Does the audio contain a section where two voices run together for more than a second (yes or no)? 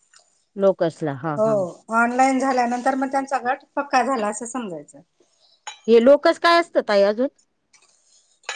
no